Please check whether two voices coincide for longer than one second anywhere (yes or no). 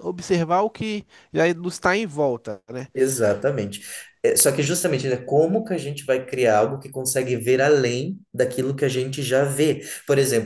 no